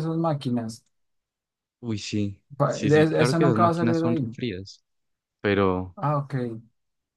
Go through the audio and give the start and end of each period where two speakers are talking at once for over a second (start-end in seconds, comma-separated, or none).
2.6-4.3